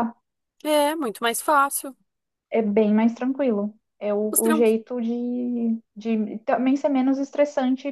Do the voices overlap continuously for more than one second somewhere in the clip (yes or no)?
no